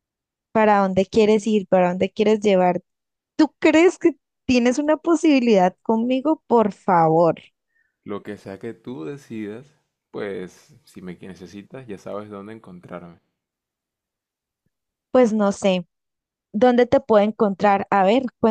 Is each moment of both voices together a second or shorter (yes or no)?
yes